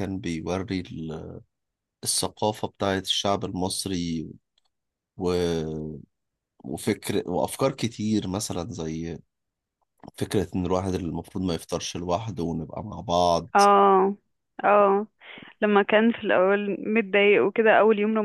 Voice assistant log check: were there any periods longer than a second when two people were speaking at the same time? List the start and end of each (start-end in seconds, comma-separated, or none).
none